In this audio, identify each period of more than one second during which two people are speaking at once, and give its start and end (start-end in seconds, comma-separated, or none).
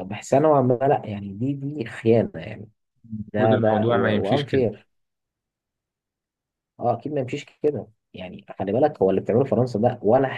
3.3-4.7